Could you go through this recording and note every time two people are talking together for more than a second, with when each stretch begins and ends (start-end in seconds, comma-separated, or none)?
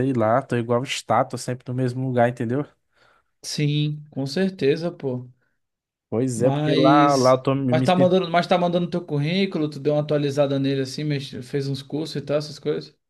6.3-7.8